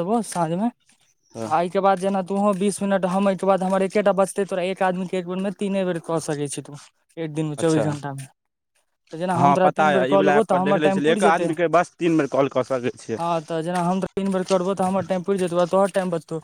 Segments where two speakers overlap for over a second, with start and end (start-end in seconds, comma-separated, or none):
9.4-11.5